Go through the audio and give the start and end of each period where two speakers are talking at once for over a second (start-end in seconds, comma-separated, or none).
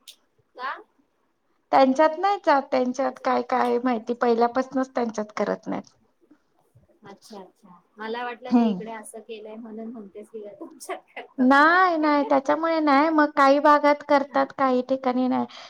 none